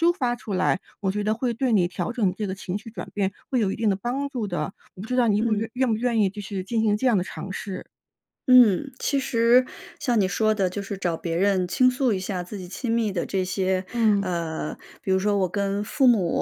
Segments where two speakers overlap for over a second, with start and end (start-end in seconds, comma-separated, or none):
none